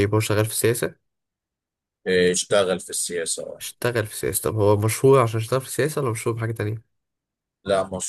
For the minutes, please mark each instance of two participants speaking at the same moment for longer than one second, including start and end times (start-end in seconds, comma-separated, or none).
none